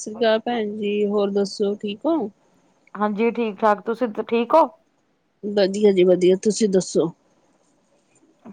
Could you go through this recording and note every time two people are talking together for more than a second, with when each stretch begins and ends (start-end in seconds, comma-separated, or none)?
none